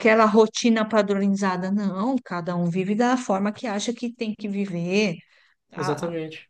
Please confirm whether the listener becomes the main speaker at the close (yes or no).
no